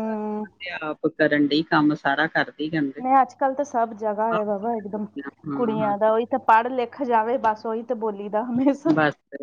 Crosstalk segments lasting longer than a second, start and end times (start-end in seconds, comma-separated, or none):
none